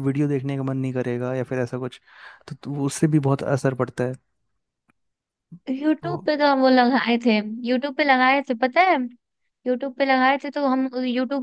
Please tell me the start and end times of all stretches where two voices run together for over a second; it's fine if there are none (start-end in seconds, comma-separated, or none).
none